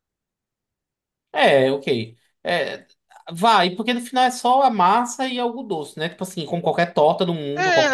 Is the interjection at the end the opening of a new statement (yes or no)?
yes